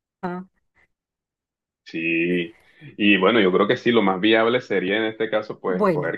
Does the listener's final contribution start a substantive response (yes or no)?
no